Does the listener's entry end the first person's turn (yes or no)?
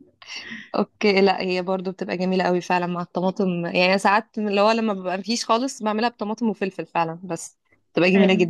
yes